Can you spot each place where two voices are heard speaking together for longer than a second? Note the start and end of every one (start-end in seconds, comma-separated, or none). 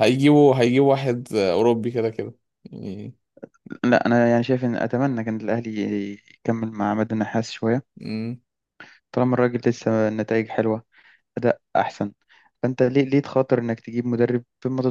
none